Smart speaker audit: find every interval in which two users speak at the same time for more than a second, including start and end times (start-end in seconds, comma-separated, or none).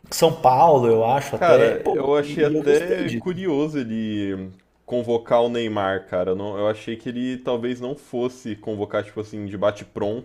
1.3-3.4